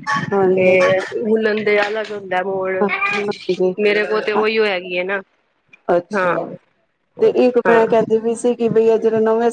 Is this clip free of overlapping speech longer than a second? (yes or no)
yes